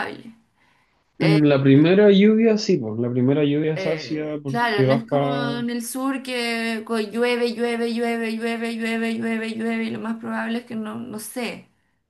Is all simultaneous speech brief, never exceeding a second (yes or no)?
no